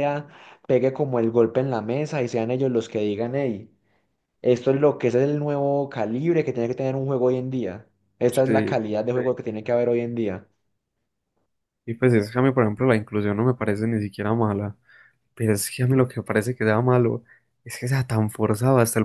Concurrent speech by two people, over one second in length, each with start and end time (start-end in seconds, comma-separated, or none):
none